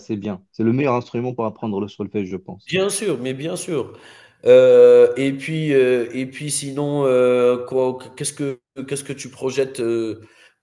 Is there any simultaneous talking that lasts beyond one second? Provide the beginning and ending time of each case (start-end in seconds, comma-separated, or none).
none